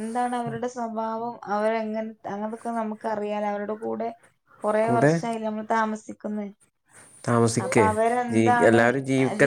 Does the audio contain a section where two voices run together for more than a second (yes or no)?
no